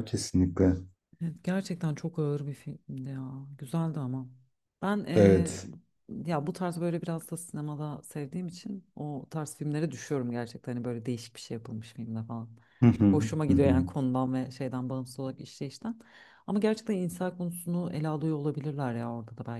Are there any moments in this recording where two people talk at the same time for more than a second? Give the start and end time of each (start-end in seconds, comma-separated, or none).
none